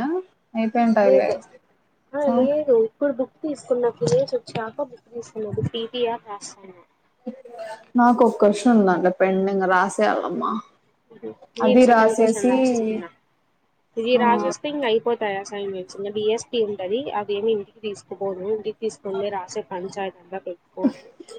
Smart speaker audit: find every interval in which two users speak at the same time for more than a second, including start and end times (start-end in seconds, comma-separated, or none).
none